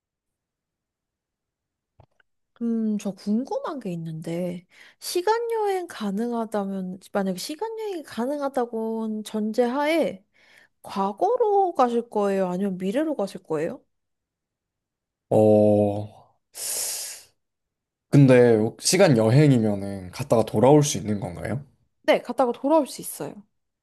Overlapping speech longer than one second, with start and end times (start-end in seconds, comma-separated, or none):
none